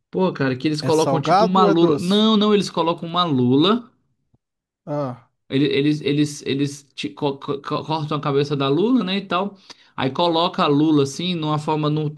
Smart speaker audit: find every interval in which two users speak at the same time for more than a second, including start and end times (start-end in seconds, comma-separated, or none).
0.8-2.2